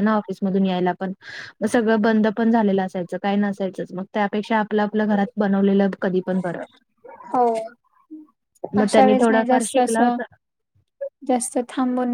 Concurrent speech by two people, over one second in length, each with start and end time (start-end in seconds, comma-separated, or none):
8.8-10.2